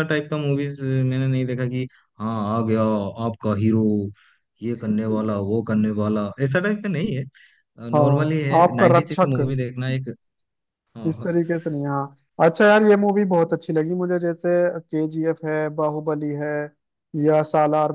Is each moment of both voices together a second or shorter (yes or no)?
no